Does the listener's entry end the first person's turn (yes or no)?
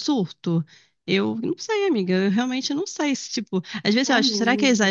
no